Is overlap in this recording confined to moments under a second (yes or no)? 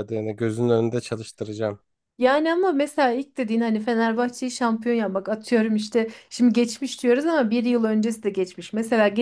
yes